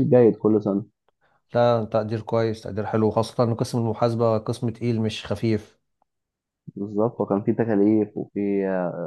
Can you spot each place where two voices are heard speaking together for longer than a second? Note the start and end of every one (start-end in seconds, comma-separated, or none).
none